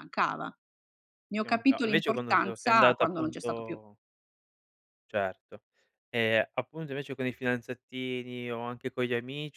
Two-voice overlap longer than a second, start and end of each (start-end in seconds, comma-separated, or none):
1.4-3.8